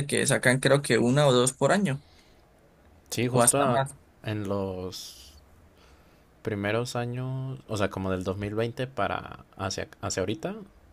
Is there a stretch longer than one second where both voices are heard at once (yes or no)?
no